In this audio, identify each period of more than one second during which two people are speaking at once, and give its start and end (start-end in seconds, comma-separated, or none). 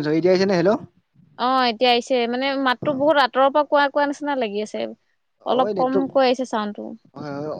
5.6-6.8